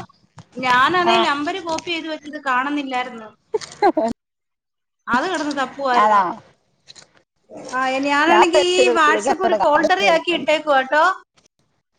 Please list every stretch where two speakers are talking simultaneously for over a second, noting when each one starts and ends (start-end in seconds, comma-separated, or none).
8.3-10.5